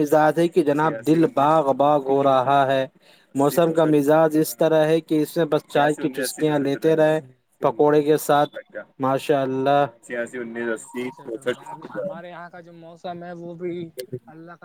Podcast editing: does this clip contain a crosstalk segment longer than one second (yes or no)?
yes